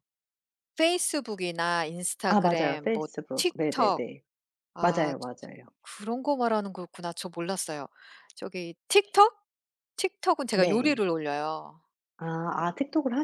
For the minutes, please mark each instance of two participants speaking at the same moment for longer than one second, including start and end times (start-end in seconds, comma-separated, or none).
2.3-4.0